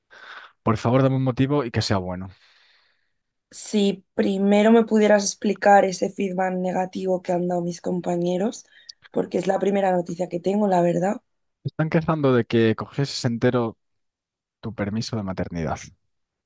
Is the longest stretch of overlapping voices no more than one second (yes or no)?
yes